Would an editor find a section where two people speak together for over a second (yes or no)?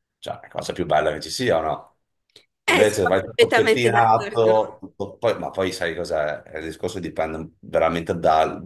yes